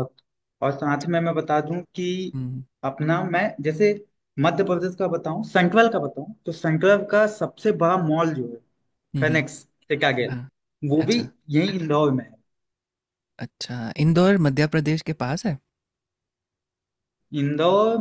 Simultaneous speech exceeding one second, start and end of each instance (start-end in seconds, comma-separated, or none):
none